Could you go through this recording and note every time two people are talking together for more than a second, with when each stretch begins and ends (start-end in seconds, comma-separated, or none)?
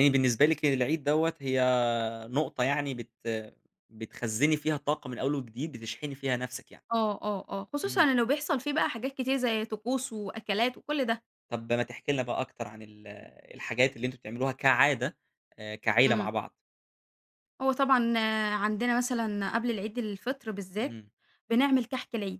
none